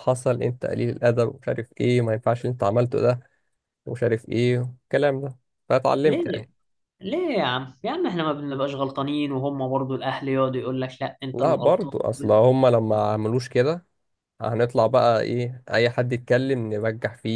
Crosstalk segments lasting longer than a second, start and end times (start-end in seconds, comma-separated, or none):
none